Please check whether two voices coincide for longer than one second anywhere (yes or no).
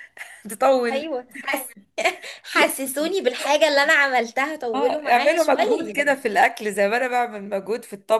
yes